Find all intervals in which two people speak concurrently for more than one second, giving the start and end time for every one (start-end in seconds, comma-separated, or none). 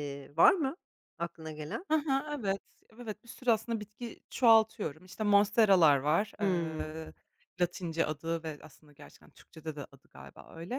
none